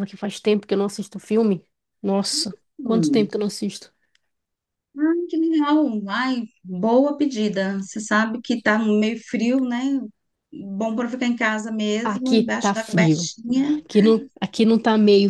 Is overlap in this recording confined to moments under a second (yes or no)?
no